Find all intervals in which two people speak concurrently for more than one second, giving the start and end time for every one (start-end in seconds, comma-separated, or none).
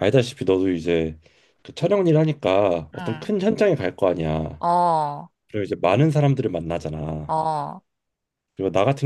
none